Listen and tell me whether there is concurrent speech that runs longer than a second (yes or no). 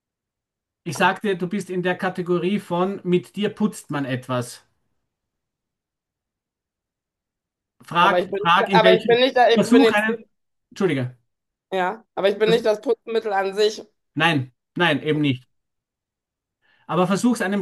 yes